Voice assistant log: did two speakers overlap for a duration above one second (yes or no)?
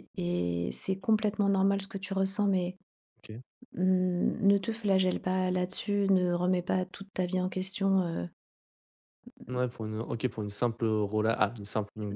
no